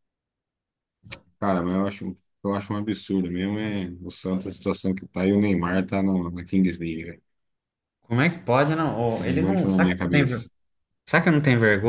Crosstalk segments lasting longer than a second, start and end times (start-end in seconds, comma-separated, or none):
9.2-10.4